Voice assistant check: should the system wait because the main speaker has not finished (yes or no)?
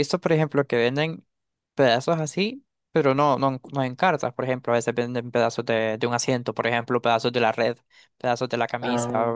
yes